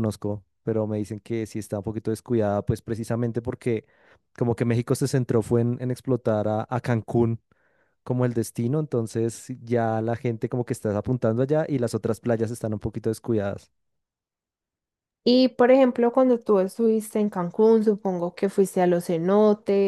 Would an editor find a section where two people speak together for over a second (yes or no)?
no